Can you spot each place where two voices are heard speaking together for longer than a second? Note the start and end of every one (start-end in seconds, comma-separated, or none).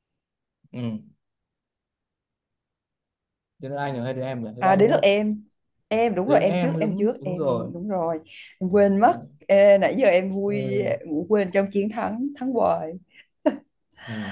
6.3-7.7